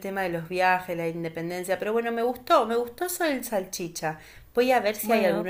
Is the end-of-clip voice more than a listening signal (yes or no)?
no